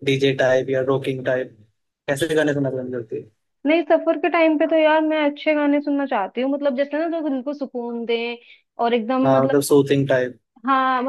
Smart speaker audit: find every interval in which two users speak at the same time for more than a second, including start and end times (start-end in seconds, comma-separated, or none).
none